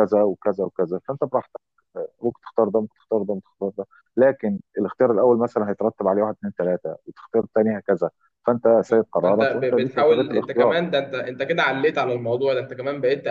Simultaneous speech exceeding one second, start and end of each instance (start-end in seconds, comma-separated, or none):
9.2-10.7